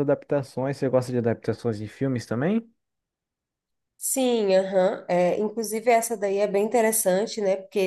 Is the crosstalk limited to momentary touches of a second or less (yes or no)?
yes